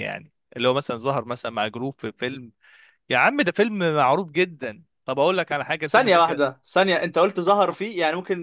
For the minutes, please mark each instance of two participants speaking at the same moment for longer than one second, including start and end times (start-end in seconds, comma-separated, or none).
none